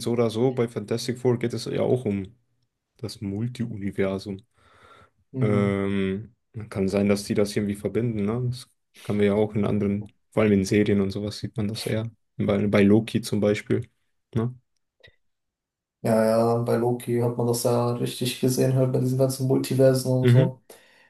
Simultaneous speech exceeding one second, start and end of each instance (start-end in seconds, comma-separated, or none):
none